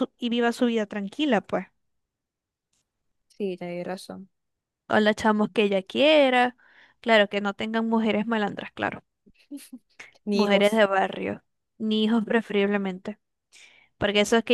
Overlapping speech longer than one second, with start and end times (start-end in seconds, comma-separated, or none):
none